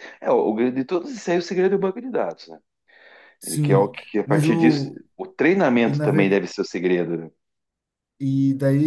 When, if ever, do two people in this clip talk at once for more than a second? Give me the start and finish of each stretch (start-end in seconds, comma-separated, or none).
3.5-5.0